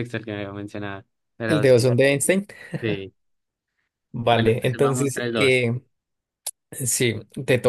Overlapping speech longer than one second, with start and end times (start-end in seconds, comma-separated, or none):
4.3-5.6